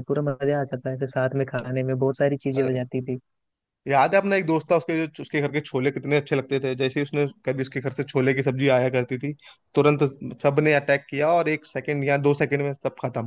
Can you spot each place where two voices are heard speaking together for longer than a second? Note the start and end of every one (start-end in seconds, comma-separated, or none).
none